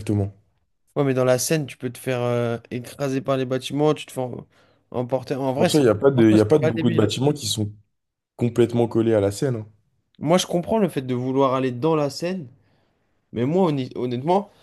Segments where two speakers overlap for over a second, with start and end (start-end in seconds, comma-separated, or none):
5.5-7.2